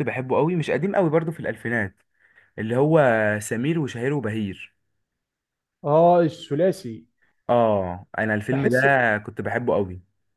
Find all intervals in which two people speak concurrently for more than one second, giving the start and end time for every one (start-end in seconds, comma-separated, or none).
none